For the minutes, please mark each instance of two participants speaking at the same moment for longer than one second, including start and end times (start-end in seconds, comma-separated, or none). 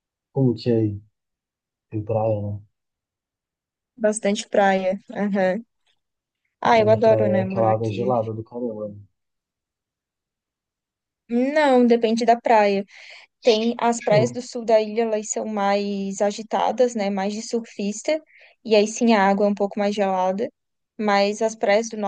6.7-8.1